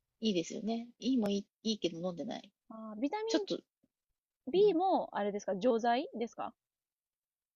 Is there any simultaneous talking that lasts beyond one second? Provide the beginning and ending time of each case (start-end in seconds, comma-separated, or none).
none